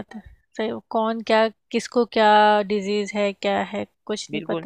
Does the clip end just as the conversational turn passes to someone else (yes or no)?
yes